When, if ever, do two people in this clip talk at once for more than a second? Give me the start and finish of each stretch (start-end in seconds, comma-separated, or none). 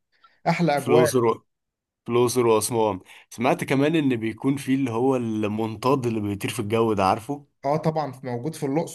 none